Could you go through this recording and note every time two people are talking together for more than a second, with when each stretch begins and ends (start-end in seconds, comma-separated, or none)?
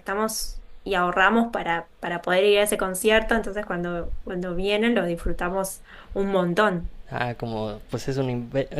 none